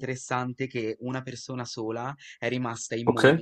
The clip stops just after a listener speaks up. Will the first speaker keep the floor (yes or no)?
yes